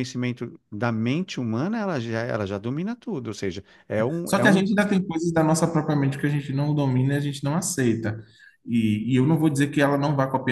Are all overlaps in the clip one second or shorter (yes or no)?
yes